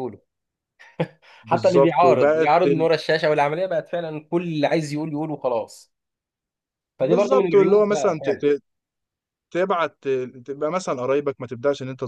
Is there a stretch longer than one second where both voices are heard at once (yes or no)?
yes